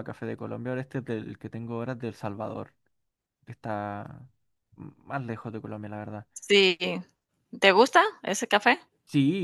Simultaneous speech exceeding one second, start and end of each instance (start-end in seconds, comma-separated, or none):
none